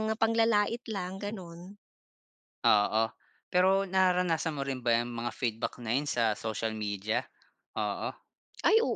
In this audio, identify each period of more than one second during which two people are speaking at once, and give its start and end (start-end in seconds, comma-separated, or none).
none